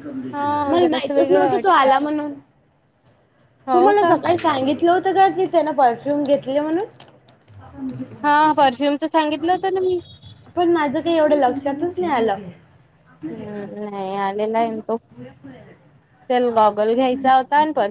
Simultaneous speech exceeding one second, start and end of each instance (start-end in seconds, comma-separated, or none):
0.7-1.9